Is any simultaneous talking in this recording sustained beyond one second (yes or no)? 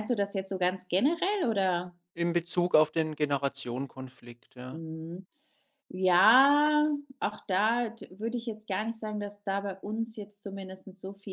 no